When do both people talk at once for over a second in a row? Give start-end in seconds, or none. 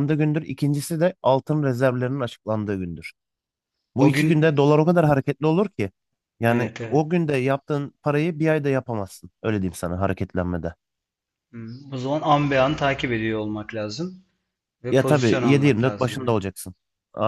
14.9-16.4